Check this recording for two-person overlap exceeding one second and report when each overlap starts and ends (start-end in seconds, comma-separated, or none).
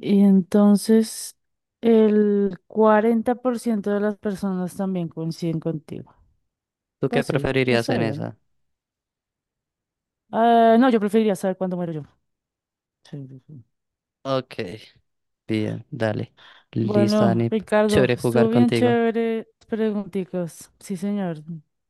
7.1-8.3, 16.8-19.0